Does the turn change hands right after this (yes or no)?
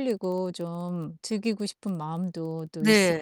yes